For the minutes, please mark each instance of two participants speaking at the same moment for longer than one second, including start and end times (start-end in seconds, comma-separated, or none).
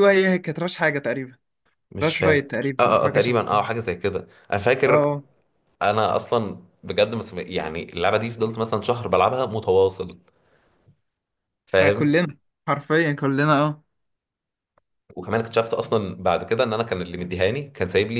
2.0-3.6